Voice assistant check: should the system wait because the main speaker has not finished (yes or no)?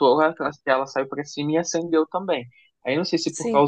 yes